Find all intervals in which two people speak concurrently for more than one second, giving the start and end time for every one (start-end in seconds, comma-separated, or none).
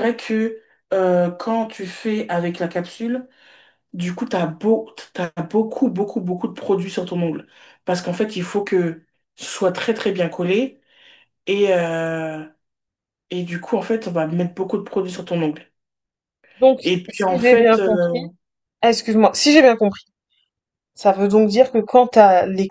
16.8-18.2